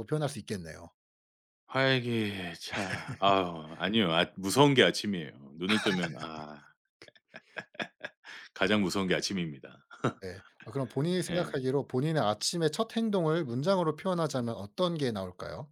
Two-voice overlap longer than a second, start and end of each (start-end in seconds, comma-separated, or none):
none